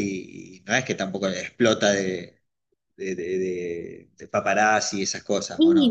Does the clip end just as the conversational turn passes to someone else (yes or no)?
yes